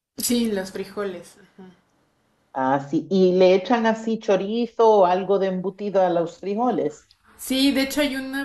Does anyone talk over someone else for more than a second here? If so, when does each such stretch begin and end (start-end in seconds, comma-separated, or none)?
none